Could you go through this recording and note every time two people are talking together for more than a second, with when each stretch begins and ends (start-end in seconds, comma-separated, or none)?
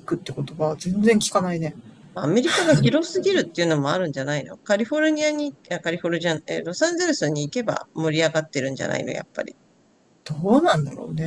none